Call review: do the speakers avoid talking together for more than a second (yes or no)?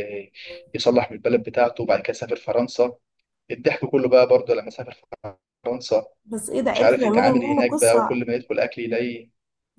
no